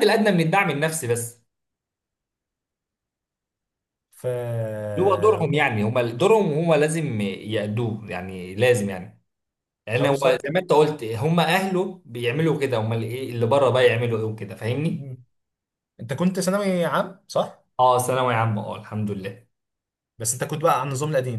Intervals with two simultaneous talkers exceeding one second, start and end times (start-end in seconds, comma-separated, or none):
none